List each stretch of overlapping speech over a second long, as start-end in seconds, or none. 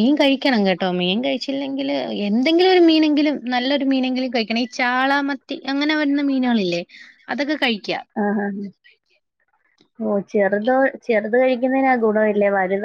none